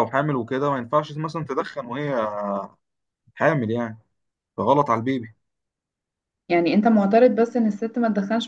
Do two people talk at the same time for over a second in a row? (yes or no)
no